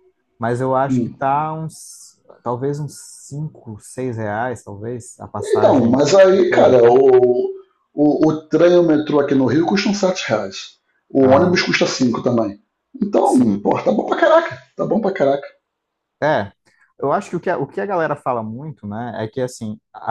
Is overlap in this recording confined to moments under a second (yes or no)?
no